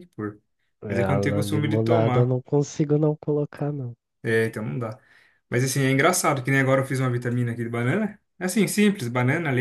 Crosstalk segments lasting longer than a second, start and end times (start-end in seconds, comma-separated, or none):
0.9-2.4